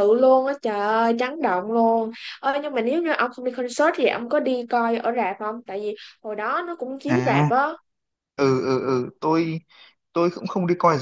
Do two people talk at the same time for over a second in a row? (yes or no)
no